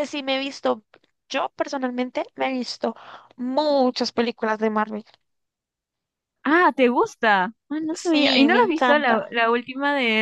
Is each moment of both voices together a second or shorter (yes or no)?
no